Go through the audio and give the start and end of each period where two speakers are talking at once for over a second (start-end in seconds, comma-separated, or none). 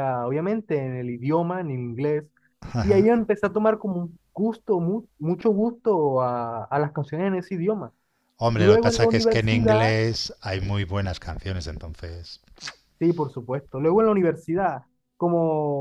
8.6-9.9